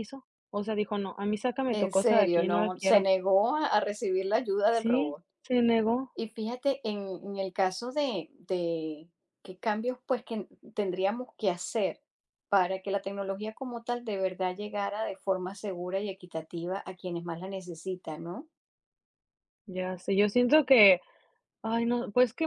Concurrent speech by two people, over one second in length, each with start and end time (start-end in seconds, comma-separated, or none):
1.7-3.1